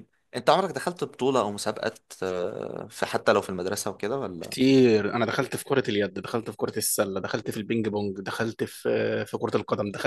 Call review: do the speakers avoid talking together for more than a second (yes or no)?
yes